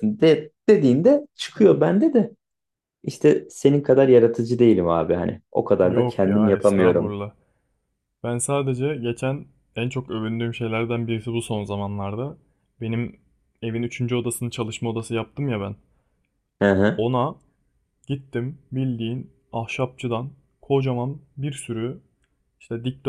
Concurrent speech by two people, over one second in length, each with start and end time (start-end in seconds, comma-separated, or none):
5.8-7.2